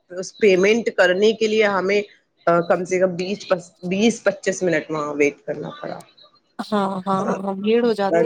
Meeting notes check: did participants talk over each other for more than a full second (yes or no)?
no